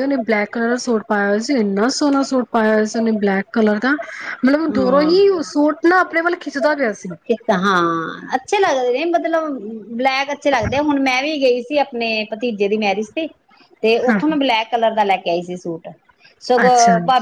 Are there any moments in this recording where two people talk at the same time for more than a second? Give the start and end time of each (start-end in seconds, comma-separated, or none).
none